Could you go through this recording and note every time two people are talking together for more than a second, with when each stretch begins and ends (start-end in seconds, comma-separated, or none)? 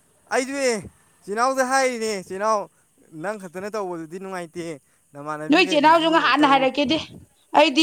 5.5-6.7